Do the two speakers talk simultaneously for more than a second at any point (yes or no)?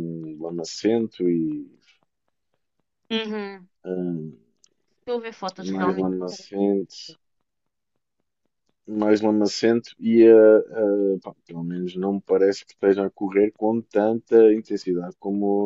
no